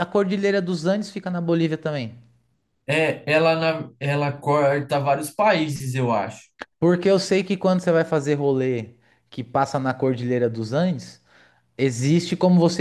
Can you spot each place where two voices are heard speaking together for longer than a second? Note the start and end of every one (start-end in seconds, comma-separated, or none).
none